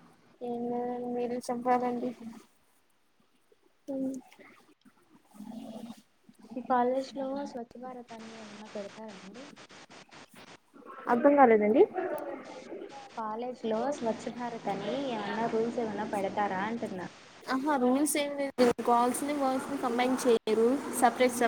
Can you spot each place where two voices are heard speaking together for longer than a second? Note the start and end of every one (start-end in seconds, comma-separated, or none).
none